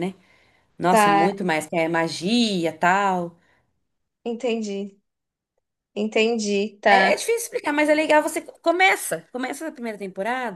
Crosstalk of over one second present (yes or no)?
no